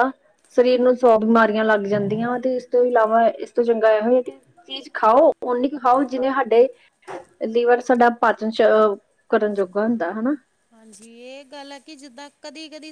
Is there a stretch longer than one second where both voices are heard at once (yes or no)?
no